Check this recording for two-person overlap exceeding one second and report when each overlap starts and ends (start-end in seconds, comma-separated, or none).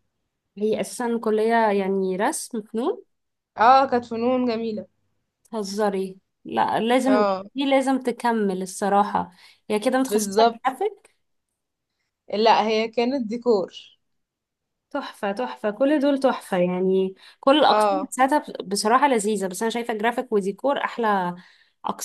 none